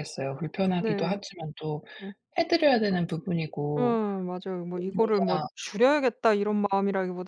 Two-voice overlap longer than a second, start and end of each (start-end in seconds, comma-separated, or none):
none